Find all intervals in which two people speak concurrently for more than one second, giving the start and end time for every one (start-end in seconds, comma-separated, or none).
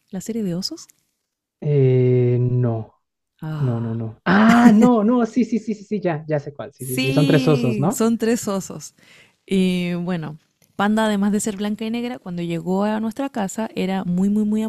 6.8-8.0